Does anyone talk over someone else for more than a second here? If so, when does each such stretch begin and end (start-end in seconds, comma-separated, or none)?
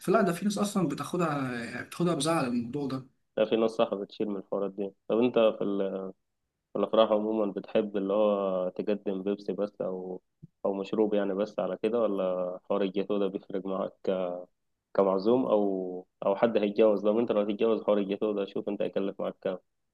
none